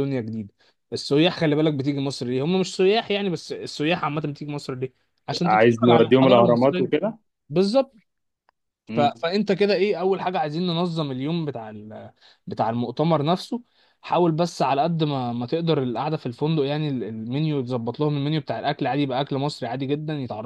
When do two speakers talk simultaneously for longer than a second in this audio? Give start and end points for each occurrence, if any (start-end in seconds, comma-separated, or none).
5.4-6.9